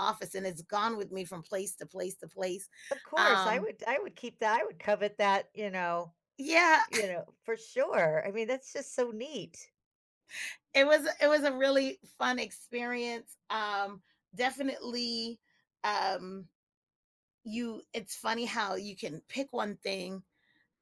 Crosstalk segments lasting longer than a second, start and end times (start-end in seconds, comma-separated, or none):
none